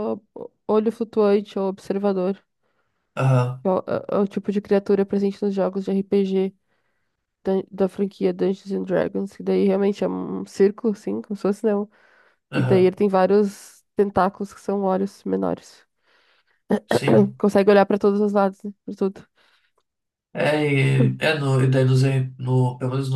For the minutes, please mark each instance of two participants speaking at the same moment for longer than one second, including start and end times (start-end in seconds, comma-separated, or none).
none